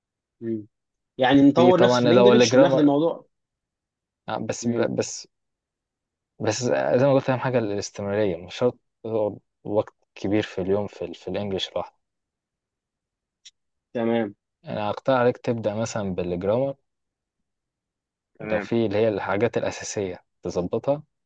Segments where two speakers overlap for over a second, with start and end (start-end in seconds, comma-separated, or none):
1.5-2.9